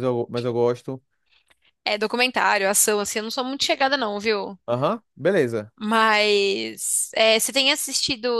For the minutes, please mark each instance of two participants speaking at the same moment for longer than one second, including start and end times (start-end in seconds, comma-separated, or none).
none